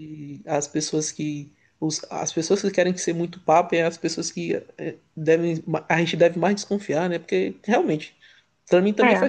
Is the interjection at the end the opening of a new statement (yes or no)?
no